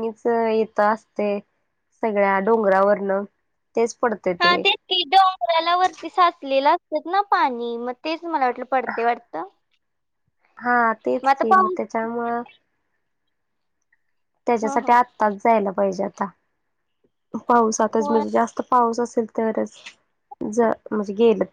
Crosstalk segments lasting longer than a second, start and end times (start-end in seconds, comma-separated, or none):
none